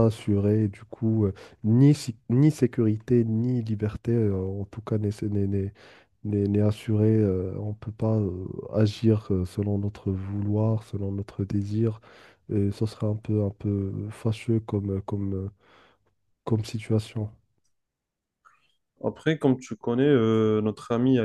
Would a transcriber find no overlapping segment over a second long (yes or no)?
yes